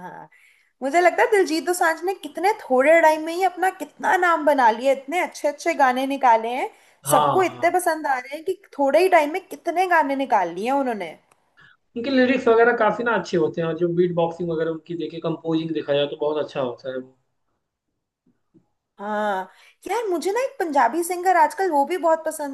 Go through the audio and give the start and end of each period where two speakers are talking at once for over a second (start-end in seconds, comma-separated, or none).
none